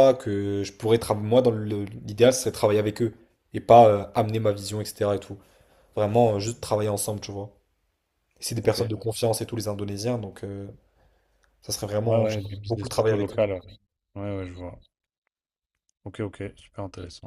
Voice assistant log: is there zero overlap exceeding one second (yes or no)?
no